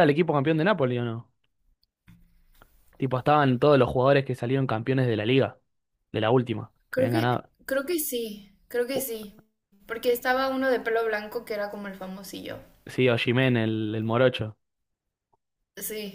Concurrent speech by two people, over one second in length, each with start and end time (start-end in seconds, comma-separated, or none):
none